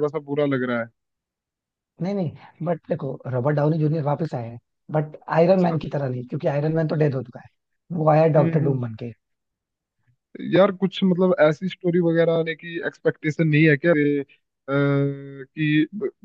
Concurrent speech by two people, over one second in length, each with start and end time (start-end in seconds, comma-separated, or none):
none